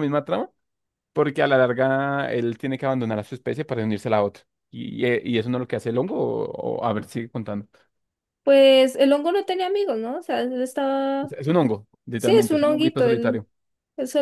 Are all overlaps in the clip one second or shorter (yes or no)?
no